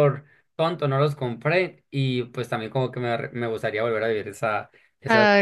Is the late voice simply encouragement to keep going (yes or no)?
no